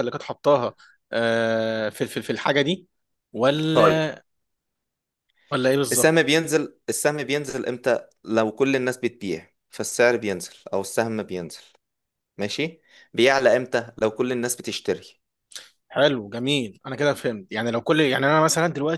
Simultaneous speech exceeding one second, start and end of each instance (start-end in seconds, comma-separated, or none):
none